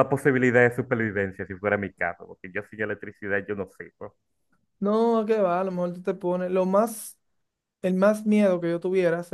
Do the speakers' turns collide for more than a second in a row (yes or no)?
no